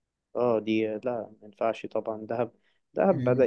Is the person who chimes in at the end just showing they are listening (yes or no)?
yes